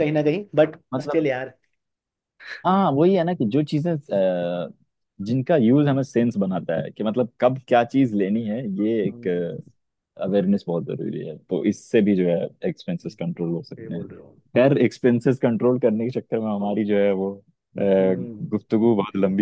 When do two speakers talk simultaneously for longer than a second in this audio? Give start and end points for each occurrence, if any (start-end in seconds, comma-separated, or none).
none